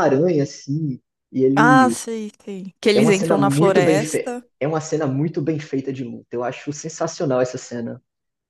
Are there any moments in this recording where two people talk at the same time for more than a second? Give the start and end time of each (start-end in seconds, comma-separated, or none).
2.9-4.4